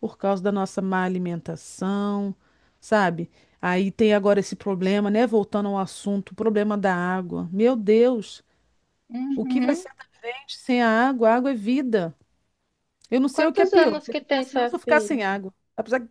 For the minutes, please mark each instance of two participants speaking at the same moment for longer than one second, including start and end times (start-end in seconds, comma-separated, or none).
13.3-15.2